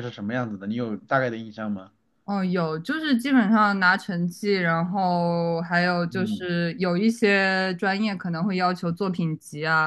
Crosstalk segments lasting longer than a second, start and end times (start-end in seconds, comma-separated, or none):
none